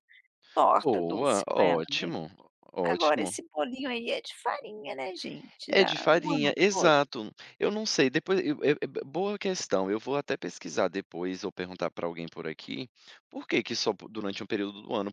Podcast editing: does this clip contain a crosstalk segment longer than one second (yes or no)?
yes